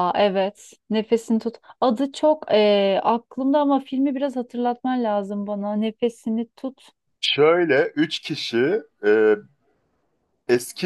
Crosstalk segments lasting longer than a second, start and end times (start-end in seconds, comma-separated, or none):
none